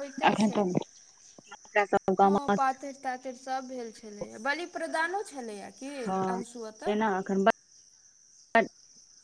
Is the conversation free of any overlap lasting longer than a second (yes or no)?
yes